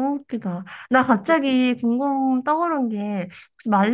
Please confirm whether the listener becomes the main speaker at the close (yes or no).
no